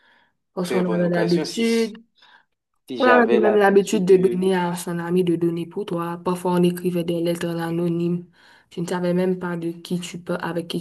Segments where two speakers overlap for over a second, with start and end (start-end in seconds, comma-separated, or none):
0.7-2.0, 3.0-4.5